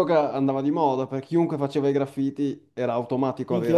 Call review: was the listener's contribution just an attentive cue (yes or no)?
no